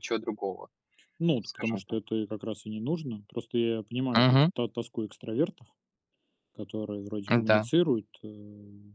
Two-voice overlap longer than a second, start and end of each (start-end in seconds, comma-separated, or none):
none